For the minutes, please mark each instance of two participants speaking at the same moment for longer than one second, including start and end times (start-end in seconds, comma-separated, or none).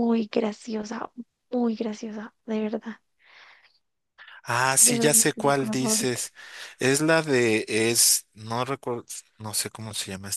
4.8-6.2